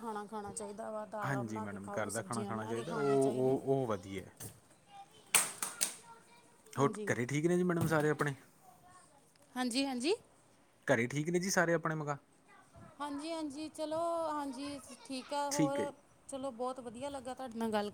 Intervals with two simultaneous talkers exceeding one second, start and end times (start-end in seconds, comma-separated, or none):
1.2-3.6